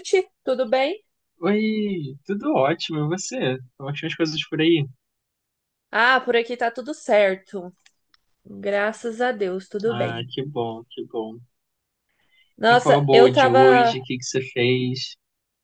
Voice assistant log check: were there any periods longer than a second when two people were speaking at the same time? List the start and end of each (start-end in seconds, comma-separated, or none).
12.7-14.0